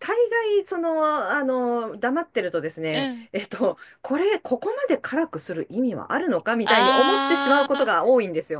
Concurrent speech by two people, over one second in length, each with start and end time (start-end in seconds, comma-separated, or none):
6.6-7.9